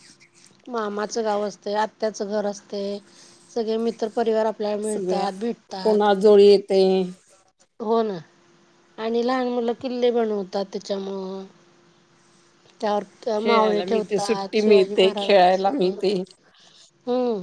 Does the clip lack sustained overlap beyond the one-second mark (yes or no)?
no